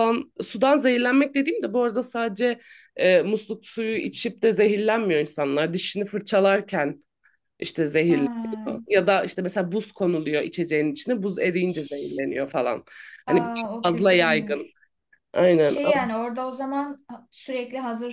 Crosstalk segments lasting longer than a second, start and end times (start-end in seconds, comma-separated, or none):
13.3-14.7